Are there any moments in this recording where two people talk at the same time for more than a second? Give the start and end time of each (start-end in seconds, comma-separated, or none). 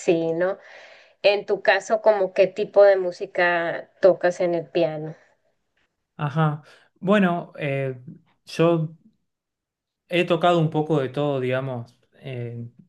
none